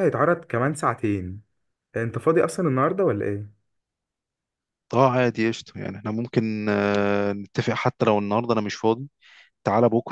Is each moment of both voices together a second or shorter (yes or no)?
yes